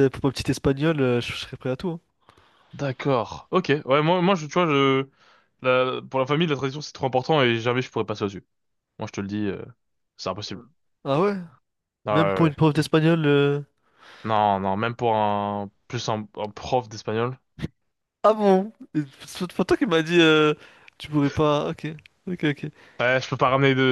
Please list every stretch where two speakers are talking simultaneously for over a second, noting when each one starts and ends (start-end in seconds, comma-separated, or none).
none